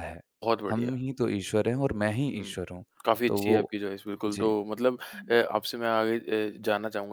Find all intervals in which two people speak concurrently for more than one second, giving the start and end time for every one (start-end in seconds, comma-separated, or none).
none